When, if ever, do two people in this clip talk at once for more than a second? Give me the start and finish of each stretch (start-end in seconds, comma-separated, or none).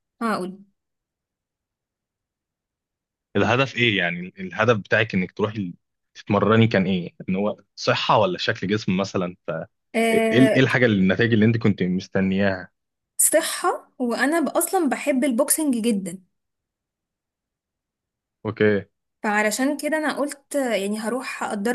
none